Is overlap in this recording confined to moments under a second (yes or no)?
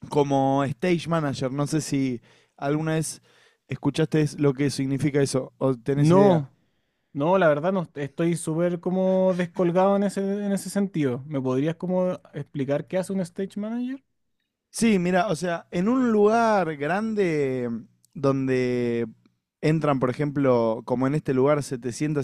yes